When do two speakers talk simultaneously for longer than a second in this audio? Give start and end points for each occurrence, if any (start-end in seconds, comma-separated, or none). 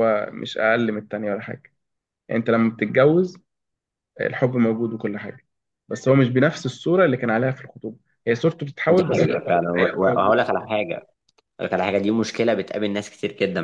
8.9-10.4